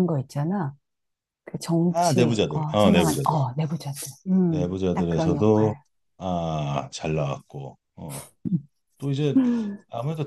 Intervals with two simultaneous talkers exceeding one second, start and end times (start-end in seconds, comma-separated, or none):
1.9-3.4, 4.5-5.8